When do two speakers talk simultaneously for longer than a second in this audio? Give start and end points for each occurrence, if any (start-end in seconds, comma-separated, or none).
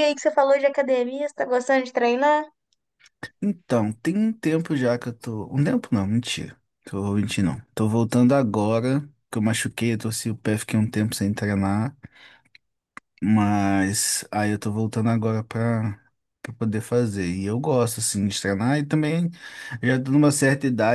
none